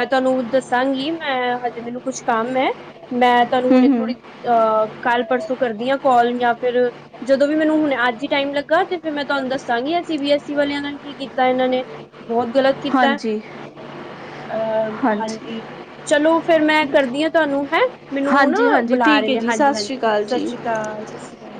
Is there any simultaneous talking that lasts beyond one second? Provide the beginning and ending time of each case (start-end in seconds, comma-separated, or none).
18.3-20.5